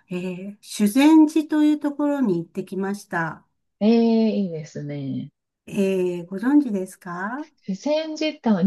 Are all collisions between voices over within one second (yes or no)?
yes